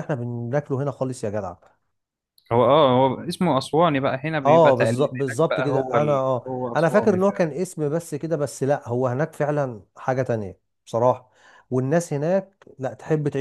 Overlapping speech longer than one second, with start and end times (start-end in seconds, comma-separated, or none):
4.5-7.6